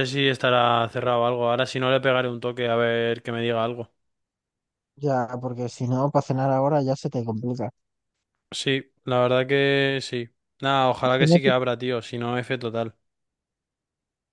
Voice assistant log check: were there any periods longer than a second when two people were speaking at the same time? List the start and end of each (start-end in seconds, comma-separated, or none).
none